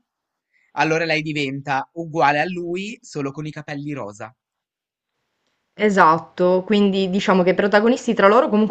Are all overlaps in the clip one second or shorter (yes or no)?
yes